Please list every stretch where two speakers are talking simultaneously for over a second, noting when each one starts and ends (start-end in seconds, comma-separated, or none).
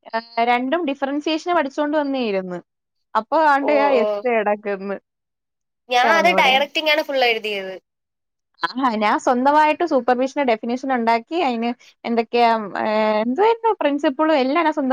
none